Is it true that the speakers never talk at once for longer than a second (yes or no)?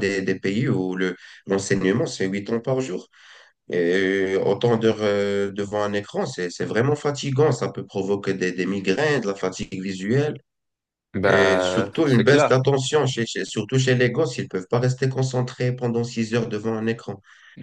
no